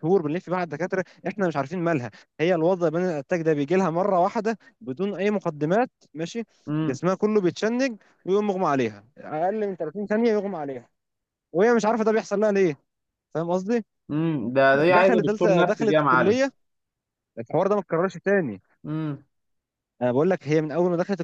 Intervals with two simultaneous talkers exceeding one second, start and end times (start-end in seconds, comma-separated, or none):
14.9-16.4